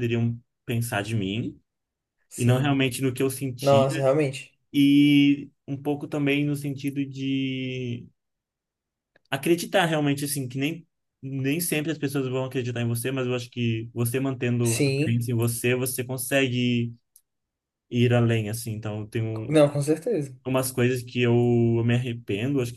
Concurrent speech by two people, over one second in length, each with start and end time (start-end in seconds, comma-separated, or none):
none